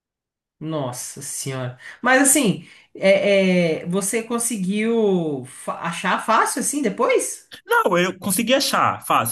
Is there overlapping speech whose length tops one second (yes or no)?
no